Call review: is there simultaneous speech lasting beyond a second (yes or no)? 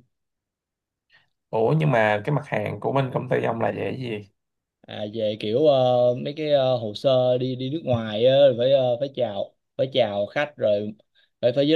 no